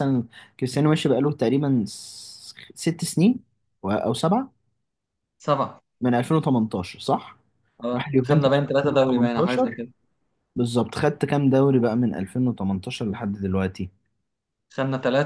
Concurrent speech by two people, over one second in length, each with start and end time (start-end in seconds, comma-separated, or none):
8.0-9.8